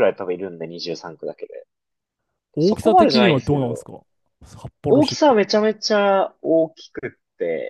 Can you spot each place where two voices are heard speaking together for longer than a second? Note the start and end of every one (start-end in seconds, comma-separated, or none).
2.6-3.9